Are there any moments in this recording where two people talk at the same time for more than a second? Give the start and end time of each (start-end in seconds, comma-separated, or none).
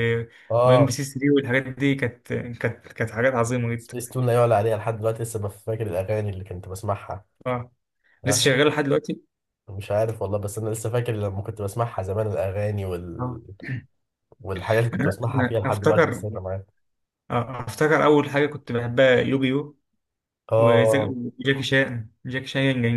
14.9-16.2